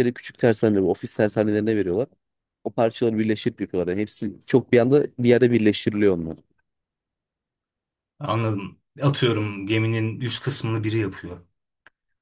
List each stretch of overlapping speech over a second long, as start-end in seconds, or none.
none